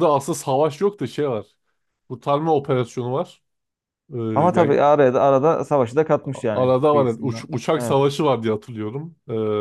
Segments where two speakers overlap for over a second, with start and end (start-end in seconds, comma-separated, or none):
6.3-8.0